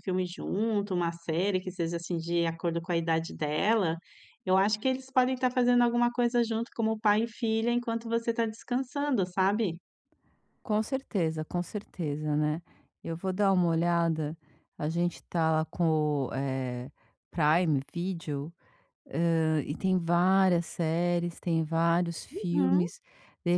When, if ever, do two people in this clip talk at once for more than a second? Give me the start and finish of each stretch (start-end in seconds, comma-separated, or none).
none